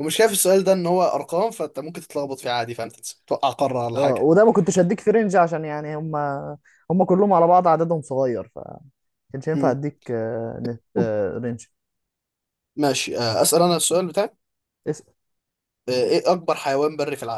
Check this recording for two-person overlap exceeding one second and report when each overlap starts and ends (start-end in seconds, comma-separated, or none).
none